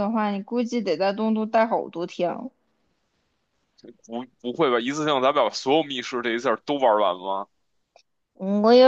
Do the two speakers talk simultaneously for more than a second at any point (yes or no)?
no